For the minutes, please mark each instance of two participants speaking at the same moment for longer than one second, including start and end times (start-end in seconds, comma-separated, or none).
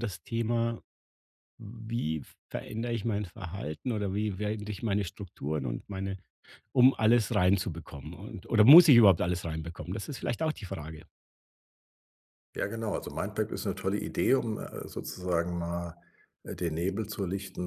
none